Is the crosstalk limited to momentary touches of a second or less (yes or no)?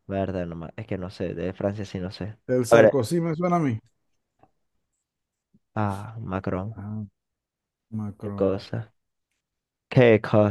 yes